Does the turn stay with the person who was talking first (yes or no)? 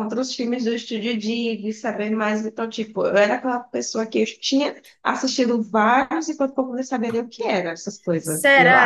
no